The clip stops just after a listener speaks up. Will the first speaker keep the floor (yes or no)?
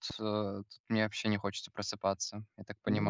no